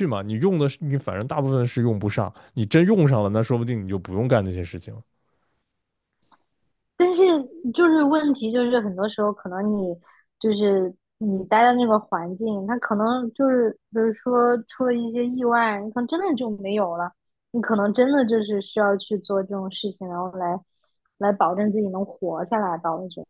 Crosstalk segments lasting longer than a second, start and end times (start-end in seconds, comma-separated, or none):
none